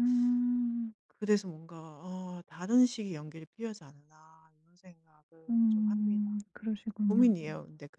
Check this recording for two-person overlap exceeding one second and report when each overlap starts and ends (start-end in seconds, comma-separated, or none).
5.5-7.3